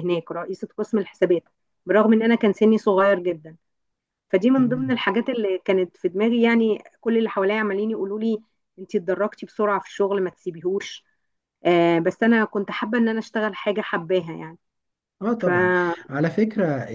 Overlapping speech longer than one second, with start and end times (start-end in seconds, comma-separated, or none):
none